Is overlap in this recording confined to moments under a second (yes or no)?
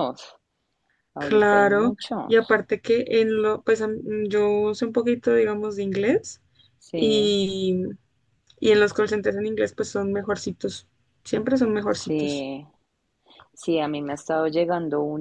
no